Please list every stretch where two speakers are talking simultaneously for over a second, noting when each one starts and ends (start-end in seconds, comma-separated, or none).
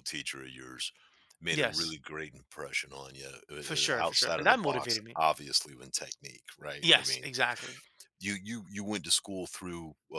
3.6-5.2